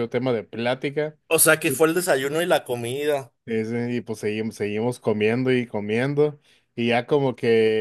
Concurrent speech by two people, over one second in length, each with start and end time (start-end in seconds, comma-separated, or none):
none